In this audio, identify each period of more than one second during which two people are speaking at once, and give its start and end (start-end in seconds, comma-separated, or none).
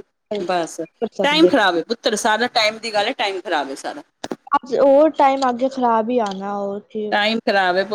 none